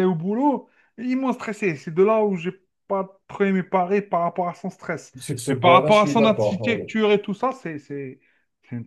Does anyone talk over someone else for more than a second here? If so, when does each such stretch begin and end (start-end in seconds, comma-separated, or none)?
5.2-6.9